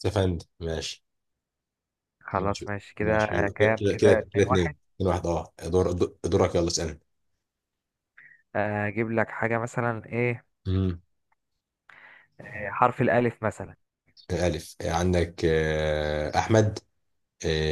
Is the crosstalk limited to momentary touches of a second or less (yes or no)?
no